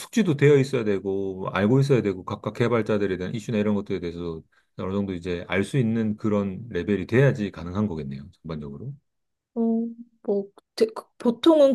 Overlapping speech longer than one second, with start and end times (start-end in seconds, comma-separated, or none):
none